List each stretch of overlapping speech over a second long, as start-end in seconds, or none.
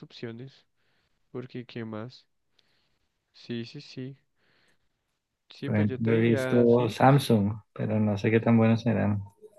5.6-7.3